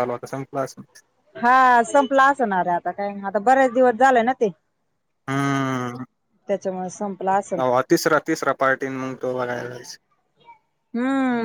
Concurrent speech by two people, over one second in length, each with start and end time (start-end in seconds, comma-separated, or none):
none